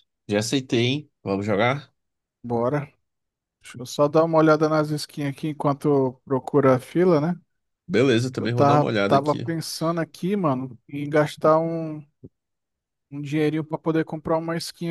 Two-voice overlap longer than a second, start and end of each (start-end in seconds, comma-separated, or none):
8.3-9.5